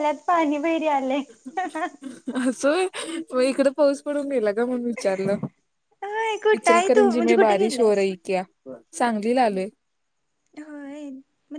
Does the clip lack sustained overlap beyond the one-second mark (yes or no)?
no